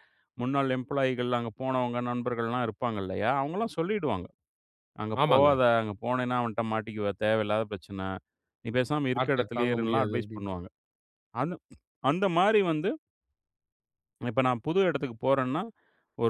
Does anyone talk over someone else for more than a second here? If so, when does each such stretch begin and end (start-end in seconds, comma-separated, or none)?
9.2-10.6